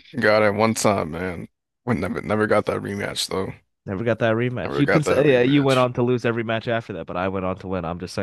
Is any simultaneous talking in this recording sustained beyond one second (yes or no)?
yes